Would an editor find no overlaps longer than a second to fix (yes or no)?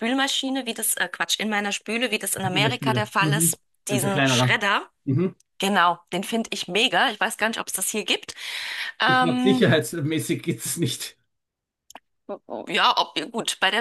no